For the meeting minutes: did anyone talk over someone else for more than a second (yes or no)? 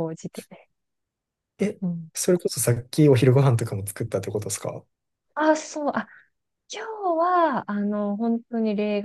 no